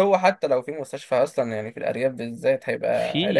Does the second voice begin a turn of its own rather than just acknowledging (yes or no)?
yes